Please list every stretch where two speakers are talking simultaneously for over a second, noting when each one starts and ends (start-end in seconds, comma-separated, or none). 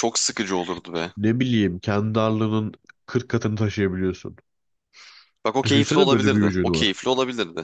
5.6-7.0